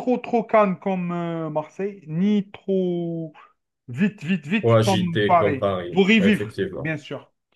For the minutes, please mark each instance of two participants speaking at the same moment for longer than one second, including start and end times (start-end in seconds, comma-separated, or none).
4.6-7.0